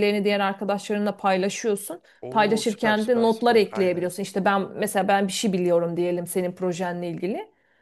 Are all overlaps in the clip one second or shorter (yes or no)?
no